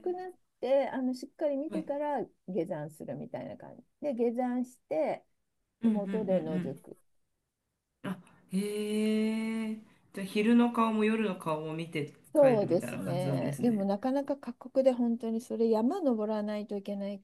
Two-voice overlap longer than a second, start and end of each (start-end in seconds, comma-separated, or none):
12.3-13.9